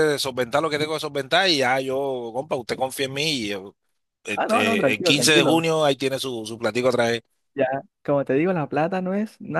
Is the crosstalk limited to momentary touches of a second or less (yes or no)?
no